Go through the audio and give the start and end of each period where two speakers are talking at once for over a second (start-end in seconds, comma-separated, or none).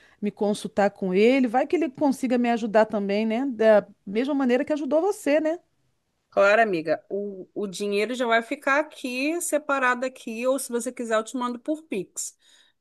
none